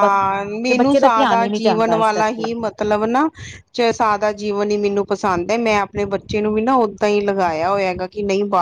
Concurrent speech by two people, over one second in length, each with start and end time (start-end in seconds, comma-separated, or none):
0.7-2.4